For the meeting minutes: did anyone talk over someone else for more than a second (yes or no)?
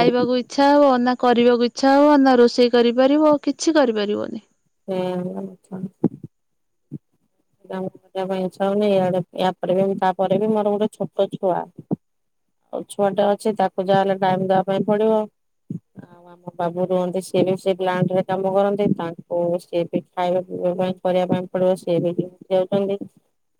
no